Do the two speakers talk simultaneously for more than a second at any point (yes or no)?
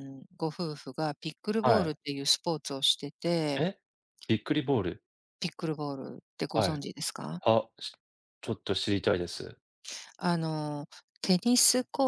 no